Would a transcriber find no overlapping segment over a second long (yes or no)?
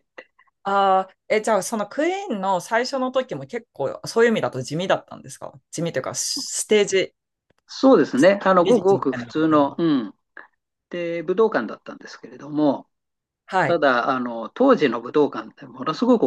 no